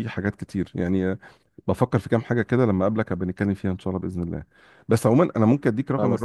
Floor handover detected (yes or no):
no